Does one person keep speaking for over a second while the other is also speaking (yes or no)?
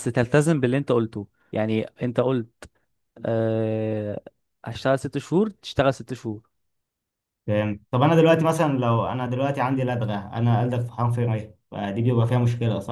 no